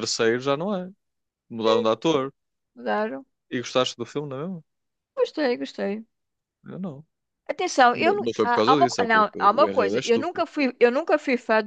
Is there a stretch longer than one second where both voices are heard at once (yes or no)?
yes